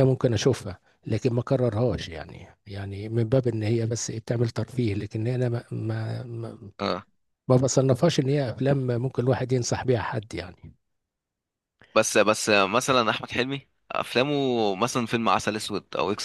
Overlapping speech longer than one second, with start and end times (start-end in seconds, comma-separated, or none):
none